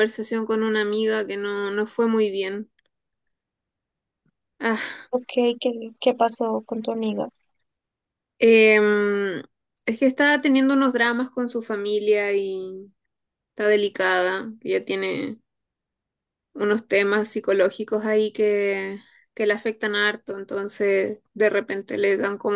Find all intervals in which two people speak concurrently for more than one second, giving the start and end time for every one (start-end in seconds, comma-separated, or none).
none